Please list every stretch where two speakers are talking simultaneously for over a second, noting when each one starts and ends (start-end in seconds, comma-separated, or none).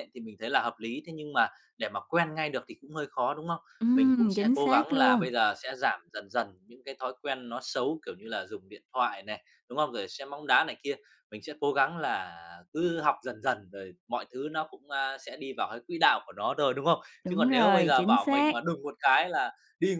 3.8-5.3, 17.2-18.6